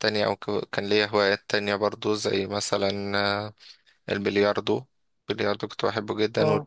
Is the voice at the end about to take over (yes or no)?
no